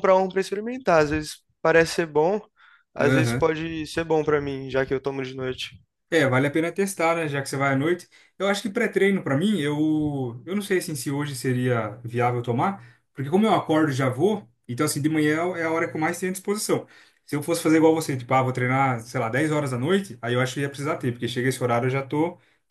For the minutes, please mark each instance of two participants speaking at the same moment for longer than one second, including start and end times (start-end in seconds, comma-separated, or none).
none